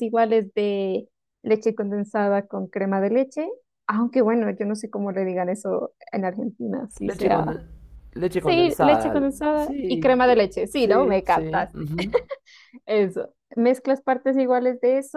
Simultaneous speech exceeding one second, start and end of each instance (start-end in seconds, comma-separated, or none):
8.4-11.9